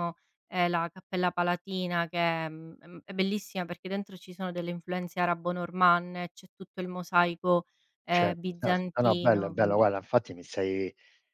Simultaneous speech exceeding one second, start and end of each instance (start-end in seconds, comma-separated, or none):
8.1-9.8